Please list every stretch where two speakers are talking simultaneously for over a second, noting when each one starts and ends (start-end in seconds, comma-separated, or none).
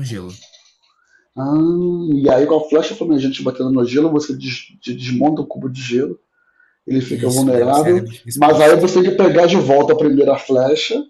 7.0-8.9